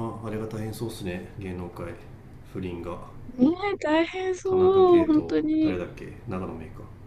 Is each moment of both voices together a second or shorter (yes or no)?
no